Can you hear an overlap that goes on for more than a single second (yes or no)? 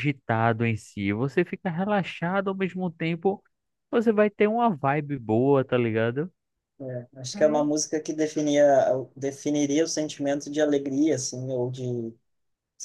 no